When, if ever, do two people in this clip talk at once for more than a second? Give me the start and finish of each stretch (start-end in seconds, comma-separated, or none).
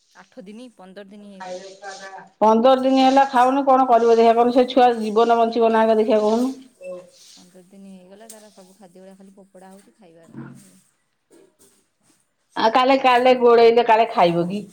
none